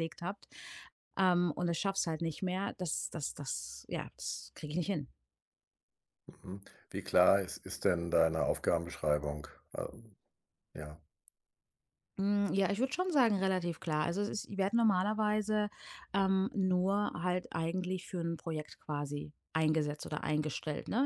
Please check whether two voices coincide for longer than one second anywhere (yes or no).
no